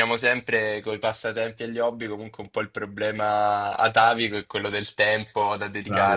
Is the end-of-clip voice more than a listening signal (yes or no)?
yes